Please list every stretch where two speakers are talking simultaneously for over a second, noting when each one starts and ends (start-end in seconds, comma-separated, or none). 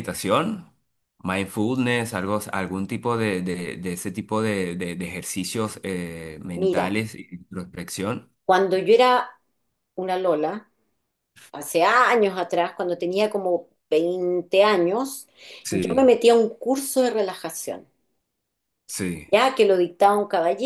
none